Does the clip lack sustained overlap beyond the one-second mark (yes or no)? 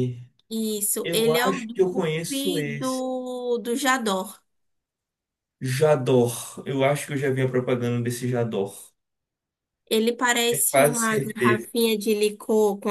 no